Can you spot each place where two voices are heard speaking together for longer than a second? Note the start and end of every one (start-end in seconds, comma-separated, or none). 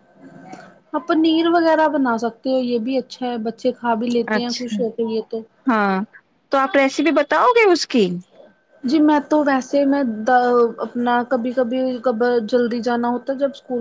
none